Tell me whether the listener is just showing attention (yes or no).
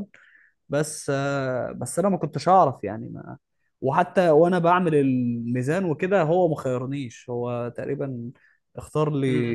no